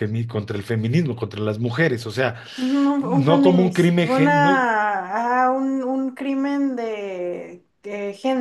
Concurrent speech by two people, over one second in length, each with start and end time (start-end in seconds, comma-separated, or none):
3.0-4.3